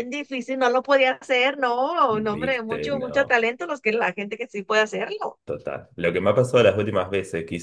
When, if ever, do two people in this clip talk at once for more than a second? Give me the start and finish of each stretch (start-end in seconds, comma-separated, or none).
2.1-3.4